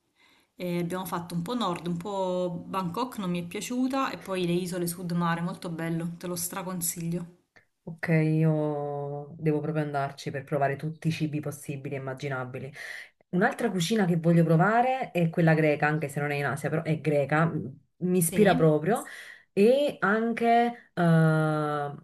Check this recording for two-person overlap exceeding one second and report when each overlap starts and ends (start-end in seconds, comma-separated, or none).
none